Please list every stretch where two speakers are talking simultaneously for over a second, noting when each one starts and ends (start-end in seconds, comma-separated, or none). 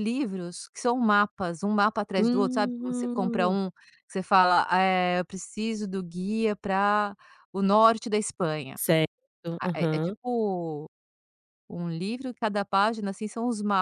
2.2-3.6